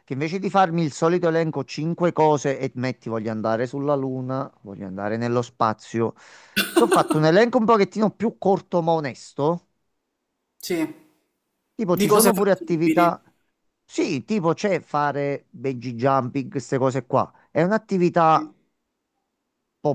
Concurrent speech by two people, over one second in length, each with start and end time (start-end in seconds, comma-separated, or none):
11.9-13.1